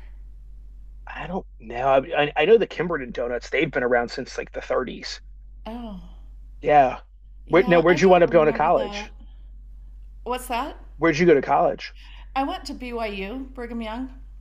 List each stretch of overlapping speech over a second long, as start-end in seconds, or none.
7.5-9.1